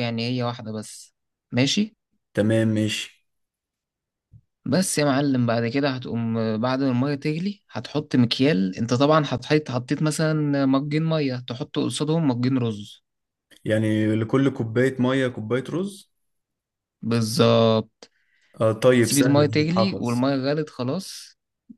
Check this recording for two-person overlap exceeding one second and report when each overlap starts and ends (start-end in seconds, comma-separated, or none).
19.0-20.2